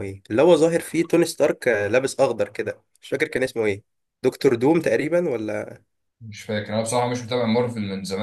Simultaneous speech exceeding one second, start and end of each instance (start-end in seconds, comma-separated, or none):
none